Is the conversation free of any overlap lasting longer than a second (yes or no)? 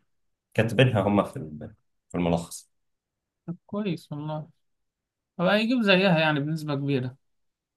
yes